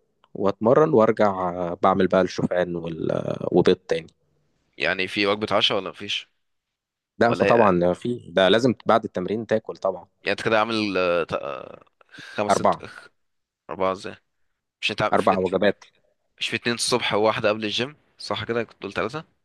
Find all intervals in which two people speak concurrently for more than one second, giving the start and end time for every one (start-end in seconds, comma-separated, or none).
none